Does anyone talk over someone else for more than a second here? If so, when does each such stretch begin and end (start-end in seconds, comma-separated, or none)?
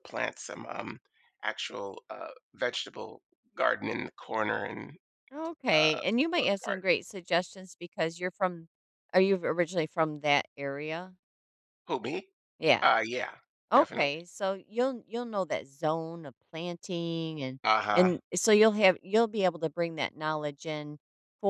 none